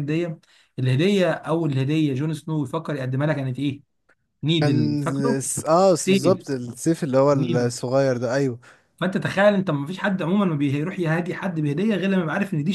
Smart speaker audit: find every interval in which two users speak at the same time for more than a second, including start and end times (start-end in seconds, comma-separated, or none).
none